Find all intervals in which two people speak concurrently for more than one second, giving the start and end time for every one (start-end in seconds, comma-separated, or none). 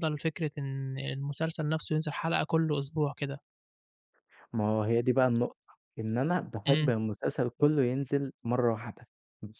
none